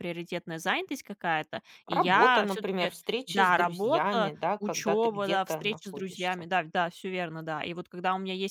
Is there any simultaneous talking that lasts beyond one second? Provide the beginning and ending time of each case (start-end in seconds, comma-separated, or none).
1.9-6.5